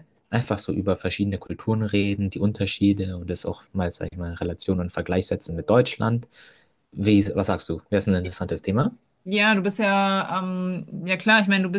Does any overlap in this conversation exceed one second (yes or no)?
no